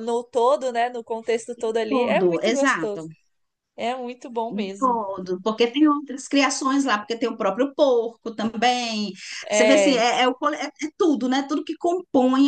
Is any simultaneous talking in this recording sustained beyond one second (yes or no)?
yes